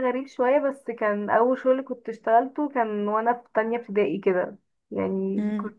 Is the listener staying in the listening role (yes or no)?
yes